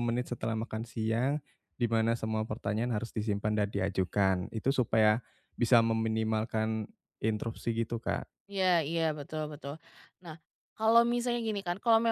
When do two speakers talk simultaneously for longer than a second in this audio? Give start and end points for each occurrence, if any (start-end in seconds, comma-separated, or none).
none